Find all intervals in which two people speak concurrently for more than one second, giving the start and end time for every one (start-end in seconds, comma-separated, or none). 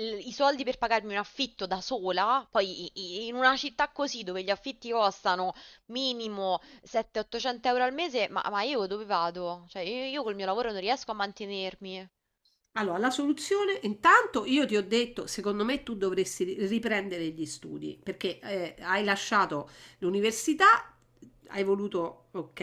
none